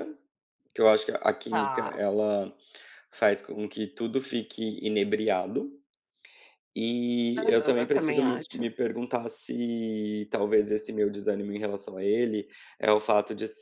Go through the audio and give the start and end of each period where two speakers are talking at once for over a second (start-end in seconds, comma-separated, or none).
7.4-8.7